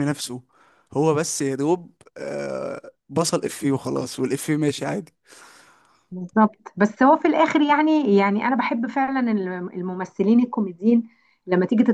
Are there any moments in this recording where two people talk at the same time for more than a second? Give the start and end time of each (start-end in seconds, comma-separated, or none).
none